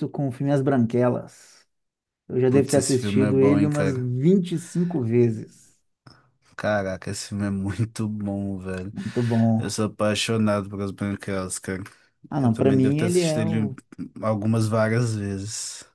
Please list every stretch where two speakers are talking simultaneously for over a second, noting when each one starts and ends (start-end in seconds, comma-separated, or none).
2.5-4.1, 12.4-13.7